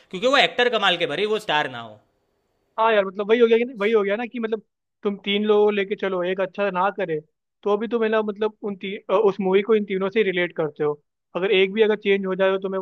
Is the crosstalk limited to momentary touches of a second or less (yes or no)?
yes